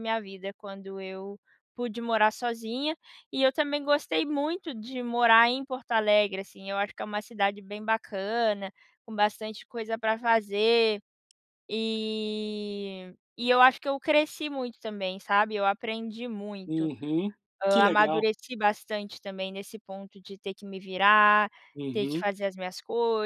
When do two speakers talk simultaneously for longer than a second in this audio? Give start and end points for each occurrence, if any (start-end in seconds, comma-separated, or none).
none